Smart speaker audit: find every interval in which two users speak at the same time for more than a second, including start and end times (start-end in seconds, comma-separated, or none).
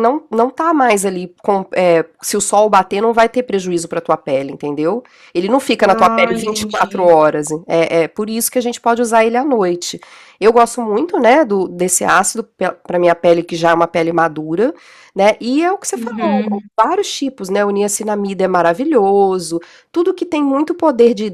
5.8-7.1